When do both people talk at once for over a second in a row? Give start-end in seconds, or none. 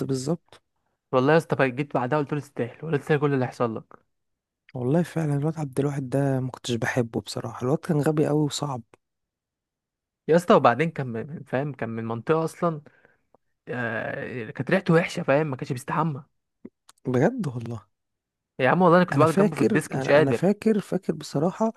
19.1-20.6